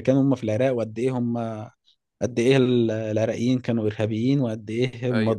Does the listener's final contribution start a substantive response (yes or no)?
no